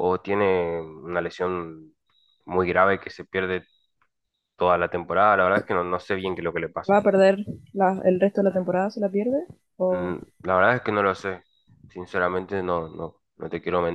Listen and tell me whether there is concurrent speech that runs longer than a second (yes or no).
no